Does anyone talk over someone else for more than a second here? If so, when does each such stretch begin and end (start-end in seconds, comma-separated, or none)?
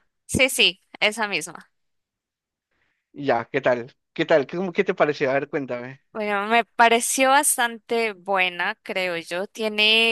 none